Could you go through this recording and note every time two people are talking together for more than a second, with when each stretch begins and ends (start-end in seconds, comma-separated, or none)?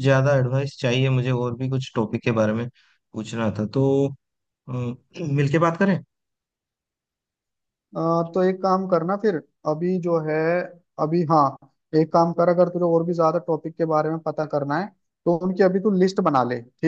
none